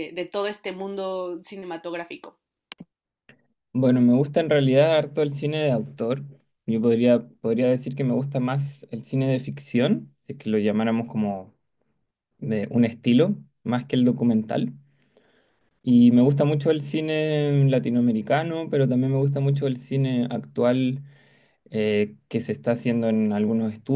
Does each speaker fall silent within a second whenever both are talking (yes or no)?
yes